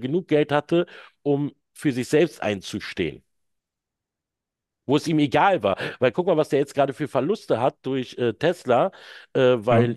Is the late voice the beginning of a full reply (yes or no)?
no